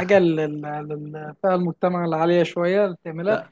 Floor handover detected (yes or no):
no